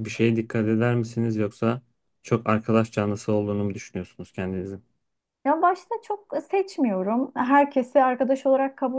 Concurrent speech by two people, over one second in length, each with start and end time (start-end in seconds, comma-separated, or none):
none